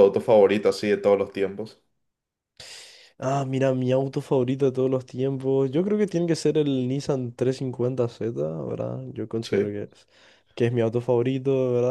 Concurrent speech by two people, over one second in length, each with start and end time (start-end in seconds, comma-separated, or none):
none